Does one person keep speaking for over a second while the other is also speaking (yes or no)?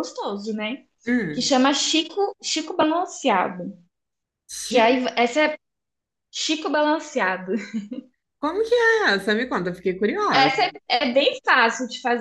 no